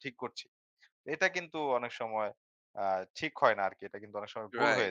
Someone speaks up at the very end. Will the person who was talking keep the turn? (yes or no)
no